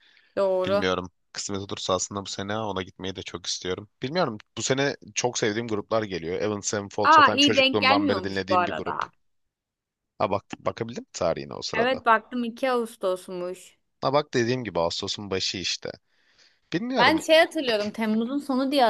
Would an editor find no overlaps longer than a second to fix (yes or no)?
no